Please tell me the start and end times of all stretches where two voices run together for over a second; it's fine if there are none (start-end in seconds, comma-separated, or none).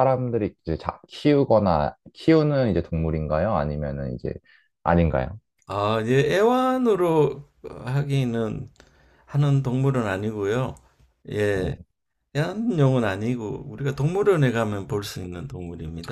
none